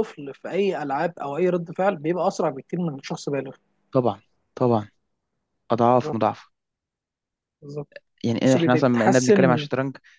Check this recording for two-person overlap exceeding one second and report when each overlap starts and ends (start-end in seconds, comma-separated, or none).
8.4-9.7